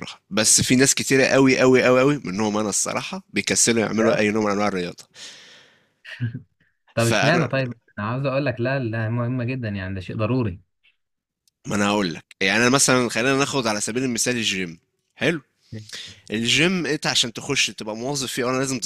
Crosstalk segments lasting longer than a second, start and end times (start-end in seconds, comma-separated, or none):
none